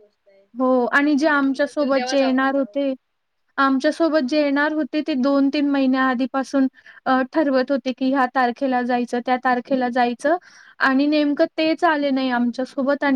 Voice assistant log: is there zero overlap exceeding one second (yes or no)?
no